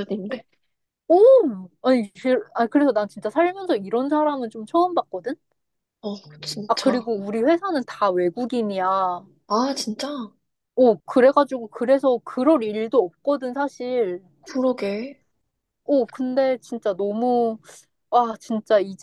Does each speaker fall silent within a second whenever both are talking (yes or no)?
yes